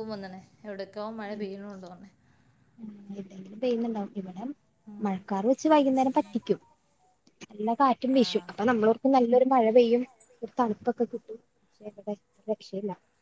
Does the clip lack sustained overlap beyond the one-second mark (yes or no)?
yes